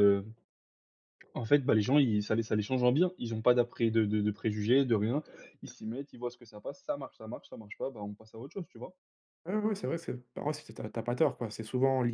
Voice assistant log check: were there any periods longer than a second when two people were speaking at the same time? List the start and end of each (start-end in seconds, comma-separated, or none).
none